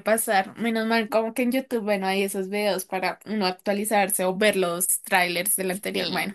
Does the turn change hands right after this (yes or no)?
yes